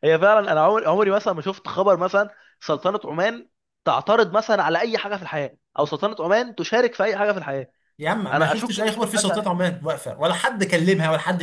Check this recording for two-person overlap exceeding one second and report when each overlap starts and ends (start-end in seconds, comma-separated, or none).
8.3-9.5